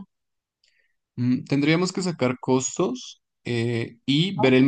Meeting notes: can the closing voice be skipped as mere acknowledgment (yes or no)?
yes